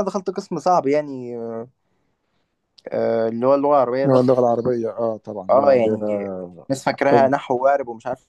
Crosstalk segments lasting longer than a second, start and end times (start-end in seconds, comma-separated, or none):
none